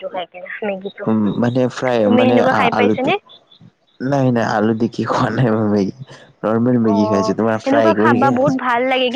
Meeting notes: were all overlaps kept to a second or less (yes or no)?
no